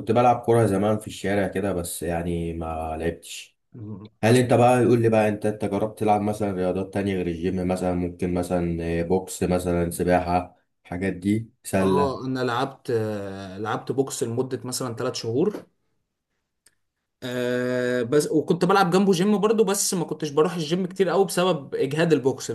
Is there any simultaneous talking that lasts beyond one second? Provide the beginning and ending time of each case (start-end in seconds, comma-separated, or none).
none